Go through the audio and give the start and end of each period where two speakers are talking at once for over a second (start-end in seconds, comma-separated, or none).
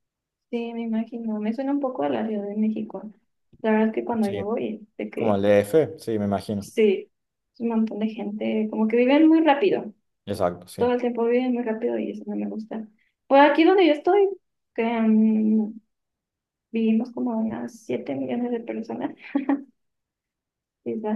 none